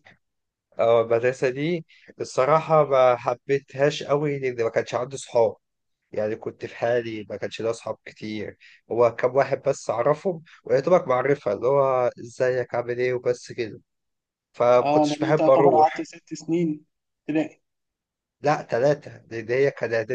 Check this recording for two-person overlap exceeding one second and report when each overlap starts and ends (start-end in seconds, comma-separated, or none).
14.8-16.1